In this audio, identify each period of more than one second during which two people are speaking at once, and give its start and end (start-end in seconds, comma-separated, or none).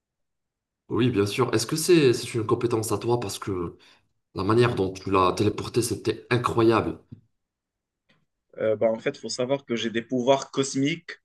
none